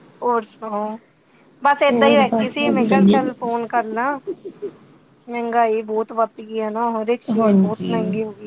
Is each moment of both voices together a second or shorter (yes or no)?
no